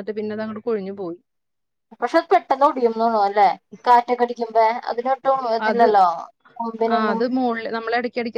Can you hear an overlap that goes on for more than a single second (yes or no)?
no